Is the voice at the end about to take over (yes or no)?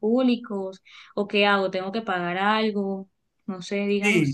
yes